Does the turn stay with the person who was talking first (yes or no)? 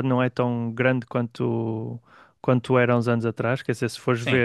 yes